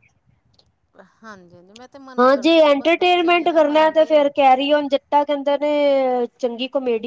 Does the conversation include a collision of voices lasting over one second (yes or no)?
no